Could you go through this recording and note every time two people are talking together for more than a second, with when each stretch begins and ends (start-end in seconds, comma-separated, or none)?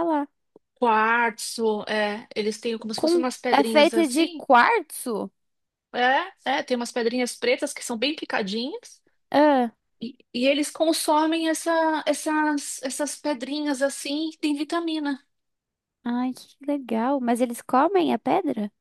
3.0-4.4